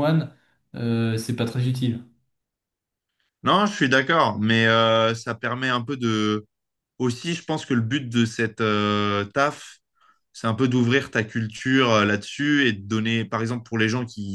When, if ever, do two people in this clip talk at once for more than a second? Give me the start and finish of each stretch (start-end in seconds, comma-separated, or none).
none